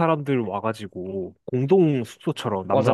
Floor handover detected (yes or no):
no